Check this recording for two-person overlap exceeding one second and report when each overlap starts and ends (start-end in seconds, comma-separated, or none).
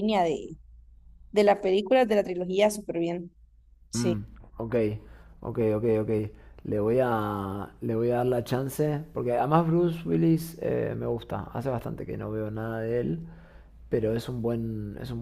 none